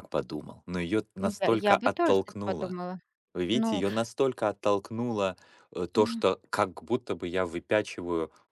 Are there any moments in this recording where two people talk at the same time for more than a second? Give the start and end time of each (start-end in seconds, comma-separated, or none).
1.5-2.8